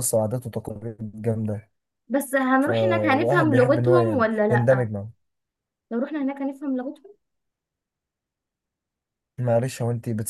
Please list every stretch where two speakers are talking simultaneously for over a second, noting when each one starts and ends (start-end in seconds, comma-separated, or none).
2.6-4.9